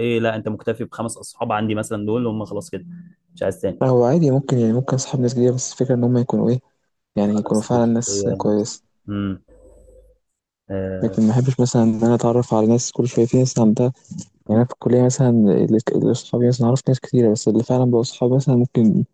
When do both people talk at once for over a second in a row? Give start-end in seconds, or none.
7.3-8.7